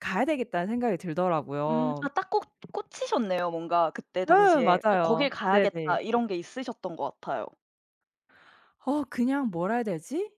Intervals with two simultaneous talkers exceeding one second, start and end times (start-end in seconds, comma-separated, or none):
4.3-6.0